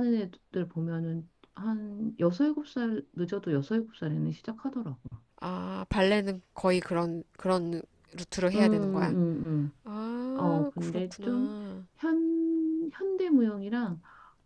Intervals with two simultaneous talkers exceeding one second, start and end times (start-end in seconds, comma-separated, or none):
10.3-11.6